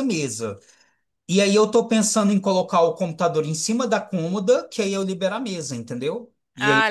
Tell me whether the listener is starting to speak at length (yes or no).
no